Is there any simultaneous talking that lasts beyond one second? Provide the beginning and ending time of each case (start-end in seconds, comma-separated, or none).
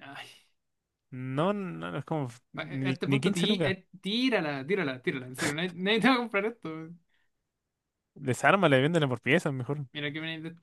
2.5-3.8